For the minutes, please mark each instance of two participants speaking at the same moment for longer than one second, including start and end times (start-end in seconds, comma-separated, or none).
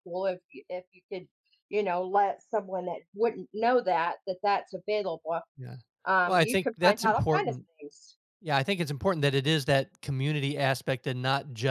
6.2-7.7